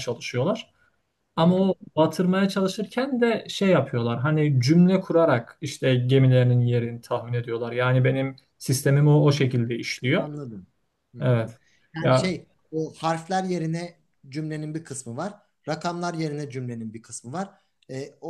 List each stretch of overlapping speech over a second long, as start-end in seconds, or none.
none